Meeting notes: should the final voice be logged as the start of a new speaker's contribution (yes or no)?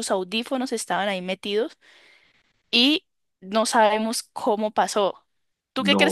yes